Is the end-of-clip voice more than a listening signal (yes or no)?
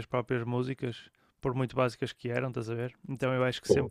no